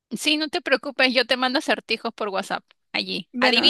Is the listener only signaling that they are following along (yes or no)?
no